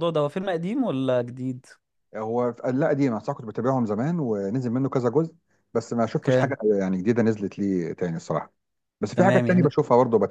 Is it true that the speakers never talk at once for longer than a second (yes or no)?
yes